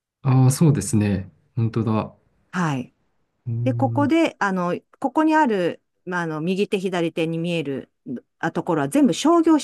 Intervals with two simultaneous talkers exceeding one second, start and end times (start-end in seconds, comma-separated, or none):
none